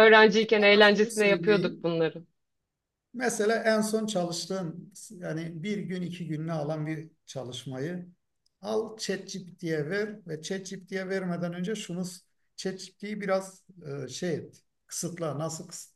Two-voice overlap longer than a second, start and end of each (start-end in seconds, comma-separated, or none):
0.6-1.9